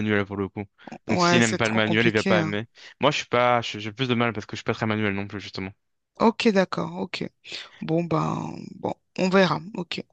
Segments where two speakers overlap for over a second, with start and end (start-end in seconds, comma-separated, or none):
1.1-2.5